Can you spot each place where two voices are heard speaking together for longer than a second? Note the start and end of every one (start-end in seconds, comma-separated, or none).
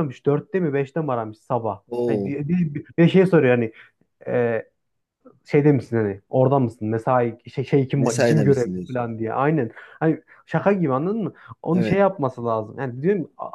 8.0-9.2